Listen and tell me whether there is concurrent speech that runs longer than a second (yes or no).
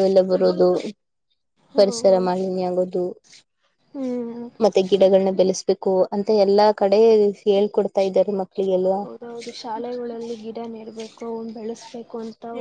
no